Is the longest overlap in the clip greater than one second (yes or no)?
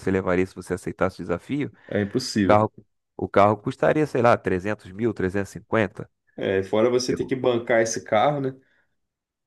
no